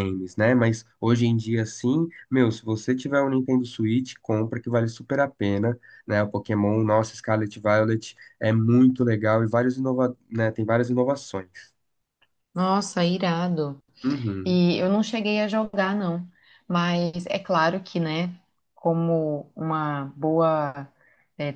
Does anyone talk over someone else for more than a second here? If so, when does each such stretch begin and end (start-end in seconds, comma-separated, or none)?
none